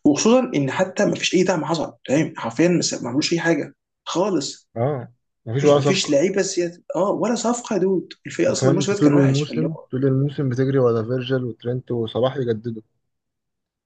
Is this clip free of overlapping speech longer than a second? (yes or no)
no